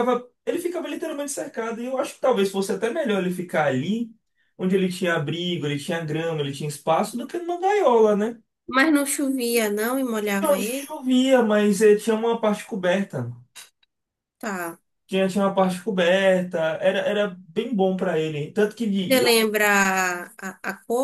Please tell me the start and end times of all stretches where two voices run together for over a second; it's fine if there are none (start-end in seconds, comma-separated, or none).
none